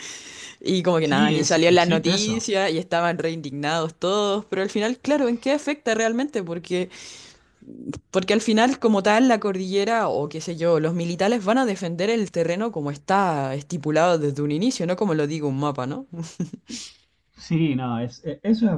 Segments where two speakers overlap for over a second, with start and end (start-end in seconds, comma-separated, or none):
1.0-2.4